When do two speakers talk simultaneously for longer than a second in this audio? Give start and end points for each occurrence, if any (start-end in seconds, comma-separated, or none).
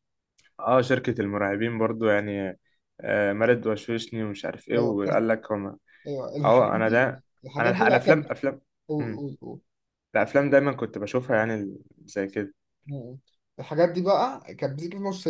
6.4-8.3